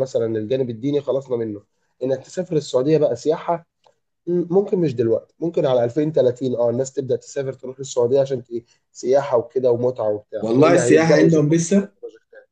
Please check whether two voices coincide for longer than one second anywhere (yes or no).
yes